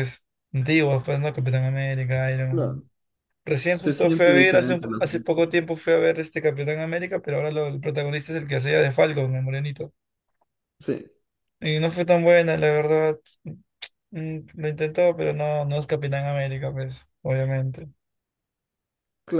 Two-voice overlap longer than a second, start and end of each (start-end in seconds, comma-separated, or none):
3.8-5.6